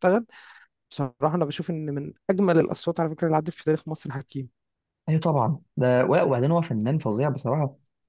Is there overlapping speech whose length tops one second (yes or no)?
no